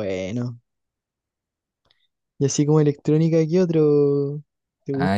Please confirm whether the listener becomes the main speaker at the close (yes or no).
yes